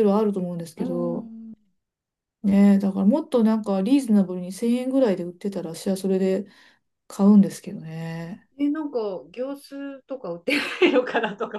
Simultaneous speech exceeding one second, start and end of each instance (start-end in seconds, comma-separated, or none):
none